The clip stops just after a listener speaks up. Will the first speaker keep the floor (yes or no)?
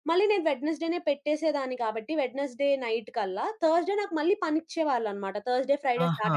no